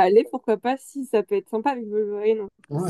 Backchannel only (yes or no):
no